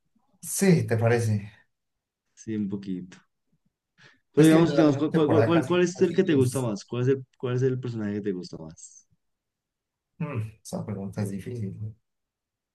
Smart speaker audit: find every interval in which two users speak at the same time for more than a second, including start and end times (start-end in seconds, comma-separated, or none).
4.4-6.7